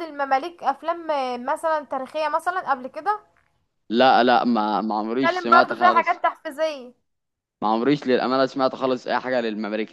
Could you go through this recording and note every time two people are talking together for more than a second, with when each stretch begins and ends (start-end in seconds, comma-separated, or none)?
5.0-6.2